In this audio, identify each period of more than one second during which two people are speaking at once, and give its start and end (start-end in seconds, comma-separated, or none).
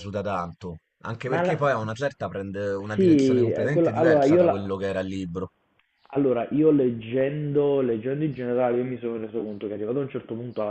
2.9-4.7